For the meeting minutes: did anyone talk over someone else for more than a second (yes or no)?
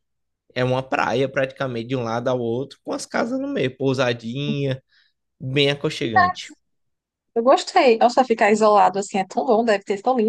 no